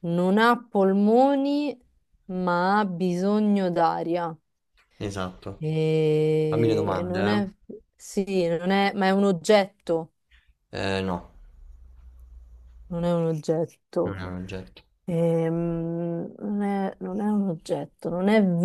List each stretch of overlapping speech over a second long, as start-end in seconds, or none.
none